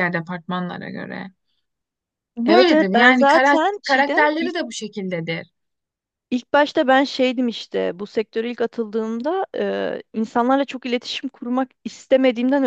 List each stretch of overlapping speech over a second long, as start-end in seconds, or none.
2.5-4.5